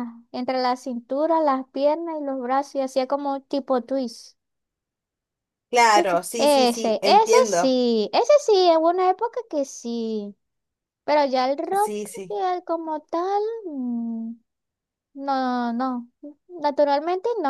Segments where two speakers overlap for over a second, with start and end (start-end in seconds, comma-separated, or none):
5.9-7.8